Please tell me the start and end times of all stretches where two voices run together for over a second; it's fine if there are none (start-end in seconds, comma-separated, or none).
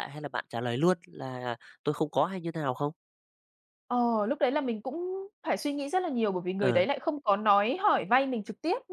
none